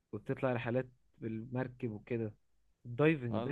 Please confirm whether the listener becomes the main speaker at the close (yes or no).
yes